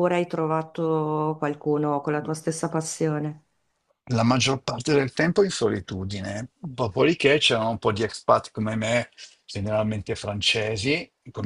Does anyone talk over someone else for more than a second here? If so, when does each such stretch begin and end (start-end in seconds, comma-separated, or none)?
none